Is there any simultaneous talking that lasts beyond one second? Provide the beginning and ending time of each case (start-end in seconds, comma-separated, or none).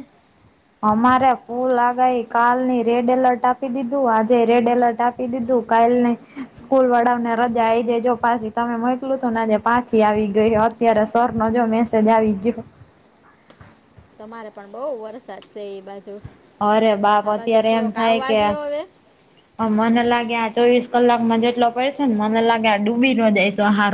none